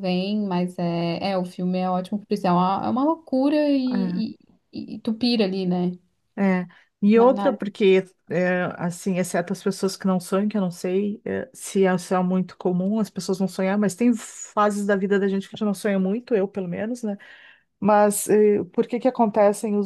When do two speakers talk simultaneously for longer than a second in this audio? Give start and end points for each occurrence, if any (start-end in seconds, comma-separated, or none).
none